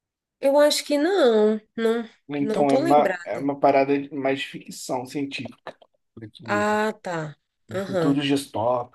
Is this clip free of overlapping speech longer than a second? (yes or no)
no